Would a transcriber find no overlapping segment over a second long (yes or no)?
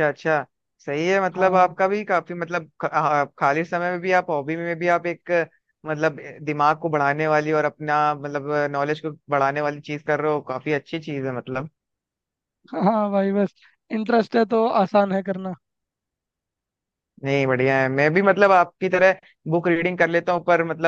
yes